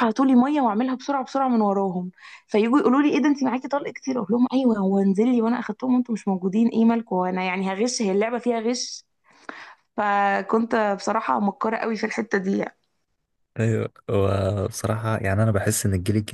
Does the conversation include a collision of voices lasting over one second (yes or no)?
no